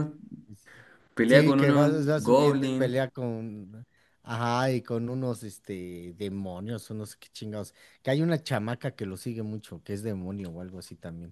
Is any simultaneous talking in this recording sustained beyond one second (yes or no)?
yes